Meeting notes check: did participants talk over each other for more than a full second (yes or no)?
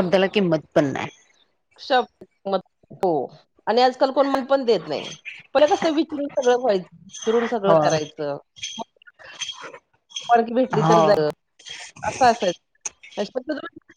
no